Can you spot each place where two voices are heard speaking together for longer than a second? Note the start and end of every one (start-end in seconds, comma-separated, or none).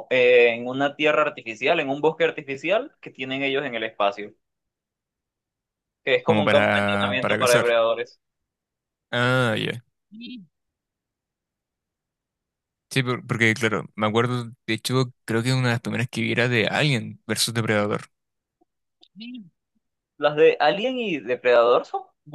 6.2-7.7